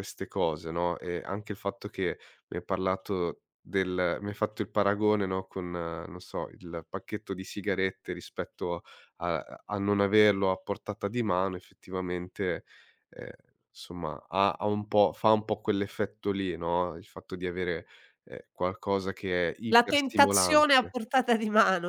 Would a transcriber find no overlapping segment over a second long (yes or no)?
no